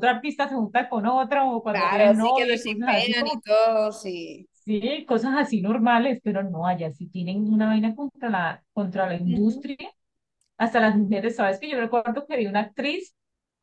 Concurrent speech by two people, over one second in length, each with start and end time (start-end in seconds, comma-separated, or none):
1.7-3.4